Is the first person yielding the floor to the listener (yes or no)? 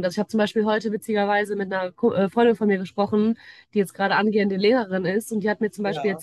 no